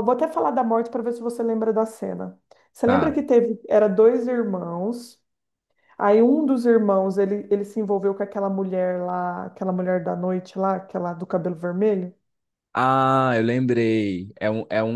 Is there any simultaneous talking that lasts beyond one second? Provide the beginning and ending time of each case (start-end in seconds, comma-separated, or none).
none